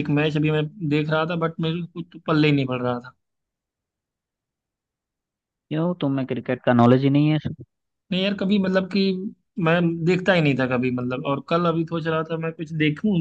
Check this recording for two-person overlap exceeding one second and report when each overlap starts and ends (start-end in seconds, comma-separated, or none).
none